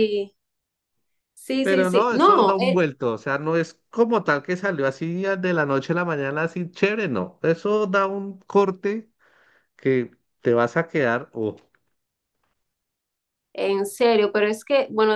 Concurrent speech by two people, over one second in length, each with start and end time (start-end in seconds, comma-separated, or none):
1.6-2.8